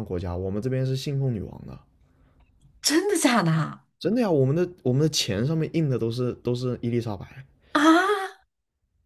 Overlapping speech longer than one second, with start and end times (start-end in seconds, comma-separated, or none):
none